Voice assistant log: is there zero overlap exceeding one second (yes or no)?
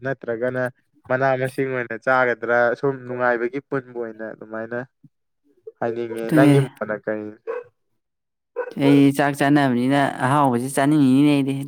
yes